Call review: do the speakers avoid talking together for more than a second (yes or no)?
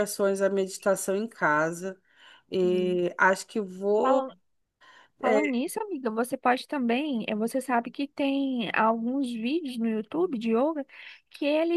yes